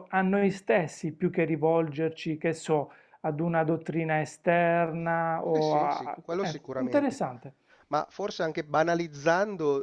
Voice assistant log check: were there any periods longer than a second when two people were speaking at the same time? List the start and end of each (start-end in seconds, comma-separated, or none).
5.5-7.2